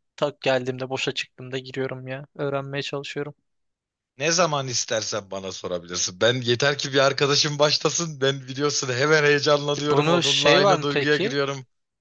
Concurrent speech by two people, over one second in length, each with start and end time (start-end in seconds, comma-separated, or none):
9.8-11.3